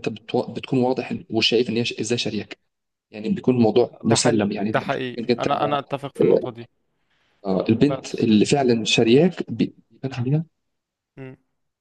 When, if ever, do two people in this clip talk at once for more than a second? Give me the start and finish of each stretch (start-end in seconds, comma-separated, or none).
4.0-5.5